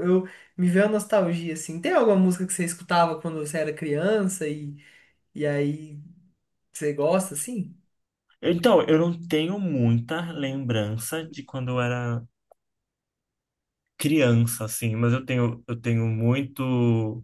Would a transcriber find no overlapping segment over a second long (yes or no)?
yes